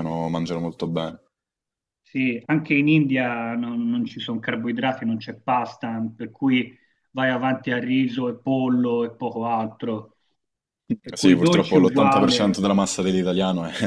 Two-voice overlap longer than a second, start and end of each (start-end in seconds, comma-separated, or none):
11.0-12.6